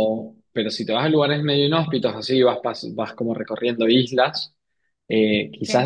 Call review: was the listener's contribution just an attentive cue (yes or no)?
yes